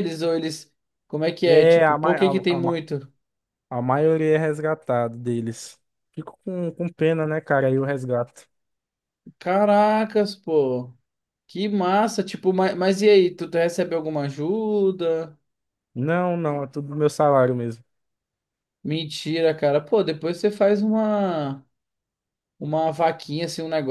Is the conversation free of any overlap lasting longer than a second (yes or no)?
no